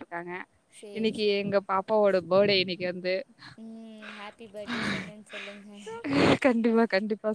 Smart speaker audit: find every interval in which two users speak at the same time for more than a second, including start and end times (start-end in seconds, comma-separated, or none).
none